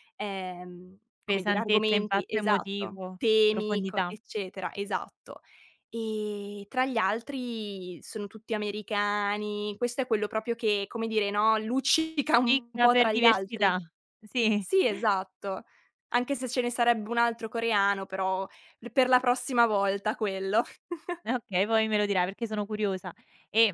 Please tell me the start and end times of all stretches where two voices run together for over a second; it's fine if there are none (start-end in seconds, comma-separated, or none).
1.3-4.1, 12.2-13.7